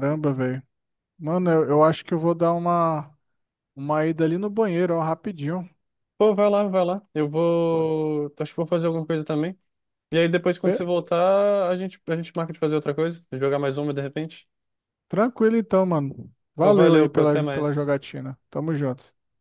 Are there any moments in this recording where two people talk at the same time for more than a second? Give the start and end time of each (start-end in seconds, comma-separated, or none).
16.6-18.0